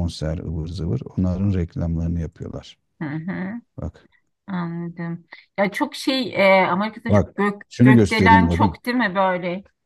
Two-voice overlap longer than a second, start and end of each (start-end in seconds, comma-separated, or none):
7.1-8.8